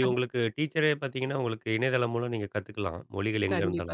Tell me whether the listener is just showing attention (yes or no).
no